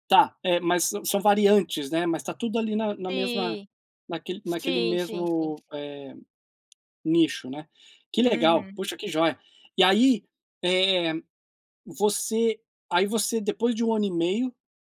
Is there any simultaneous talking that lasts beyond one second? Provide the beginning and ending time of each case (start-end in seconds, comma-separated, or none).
4.4-5.7